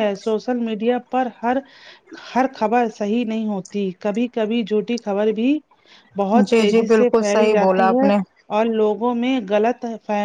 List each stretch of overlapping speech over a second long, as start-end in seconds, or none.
6.5-8.1